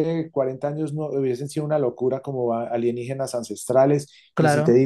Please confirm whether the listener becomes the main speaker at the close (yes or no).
no